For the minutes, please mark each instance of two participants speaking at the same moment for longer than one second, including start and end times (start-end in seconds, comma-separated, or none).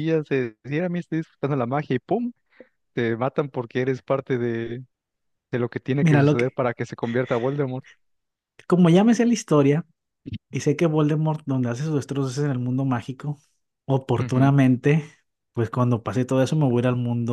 none